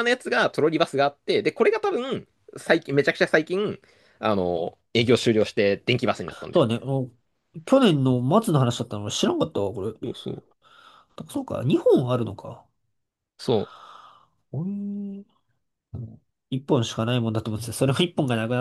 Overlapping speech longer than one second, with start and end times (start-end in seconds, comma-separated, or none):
none